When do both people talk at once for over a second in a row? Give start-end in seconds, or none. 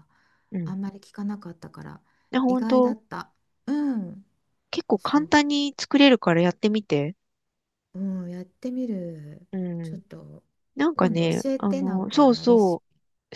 10.9-12.8